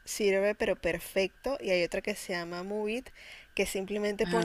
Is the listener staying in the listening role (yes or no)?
yes